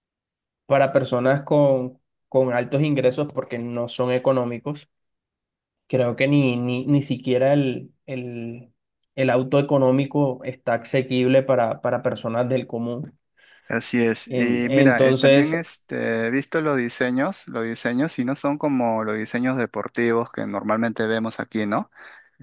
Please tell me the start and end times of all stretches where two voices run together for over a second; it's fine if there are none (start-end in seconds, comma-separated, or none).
14.3-15.6